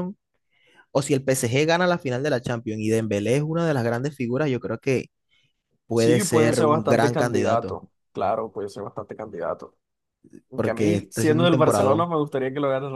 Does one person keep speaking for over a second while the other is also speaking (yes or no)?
yes